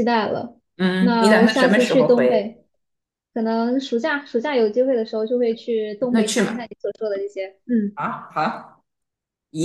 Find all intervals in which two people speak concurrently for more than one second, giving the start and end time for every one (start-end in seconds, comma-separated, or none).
1.0-2.5